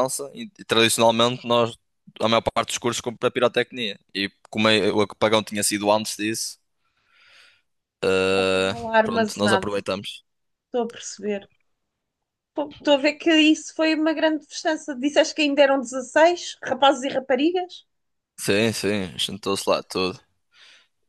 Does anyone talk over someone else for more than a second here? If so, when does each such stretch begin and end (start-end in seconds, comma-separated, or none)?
8.3-9.7